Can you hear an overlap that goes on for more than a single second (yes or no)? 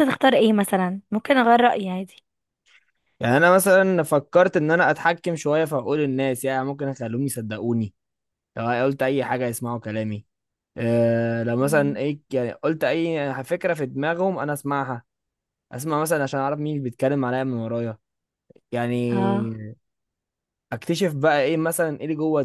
no